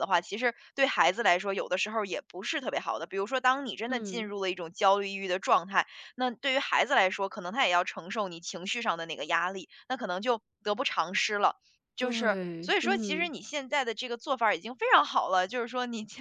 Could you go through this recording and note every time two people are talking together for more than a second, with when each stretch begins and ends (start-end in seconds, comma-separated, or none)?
12.0-13.3